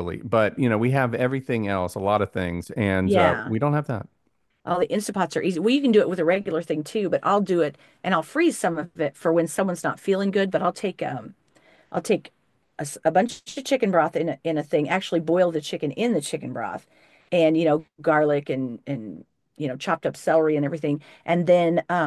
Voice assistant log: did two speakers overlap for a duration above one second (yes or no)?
no